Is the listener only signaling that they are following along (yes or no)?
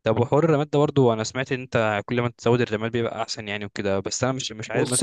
no